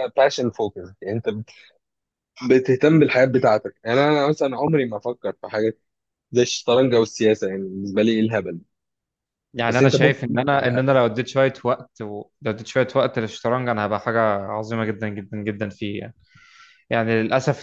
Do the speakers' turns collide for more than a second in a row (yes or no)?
yes